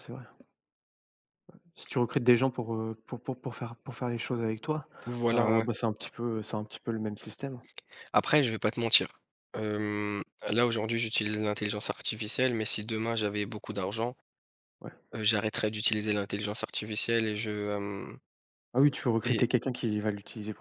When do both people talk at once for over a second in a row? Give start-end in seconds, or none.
none